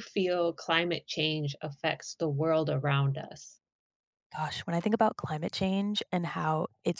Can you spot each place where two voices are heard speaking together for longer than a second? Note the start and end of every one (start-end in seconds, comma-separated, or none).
none